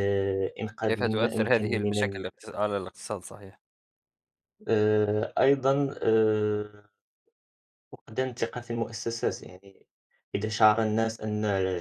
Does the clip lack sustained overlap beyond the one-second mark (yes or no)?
no